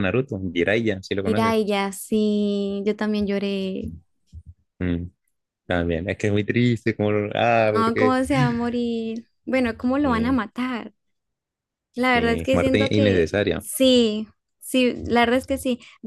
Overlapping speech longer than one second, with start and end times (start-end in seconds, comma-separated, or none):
12.1-13.7